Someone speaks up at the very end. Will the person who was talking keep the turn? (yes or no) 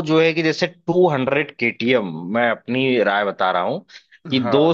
yes